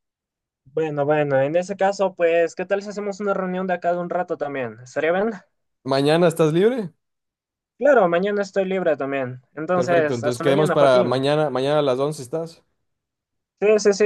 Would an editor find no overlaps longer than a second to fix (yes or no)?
no